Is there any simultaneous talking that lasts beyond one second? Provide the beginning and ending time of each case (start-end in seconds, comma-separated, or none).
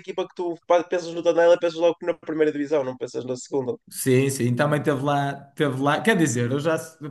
none